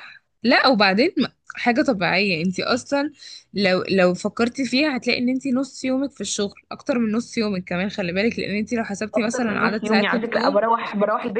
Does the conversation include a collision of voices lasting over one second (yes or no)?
yes